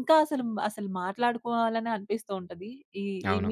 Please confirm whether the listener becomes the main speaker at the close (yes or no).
no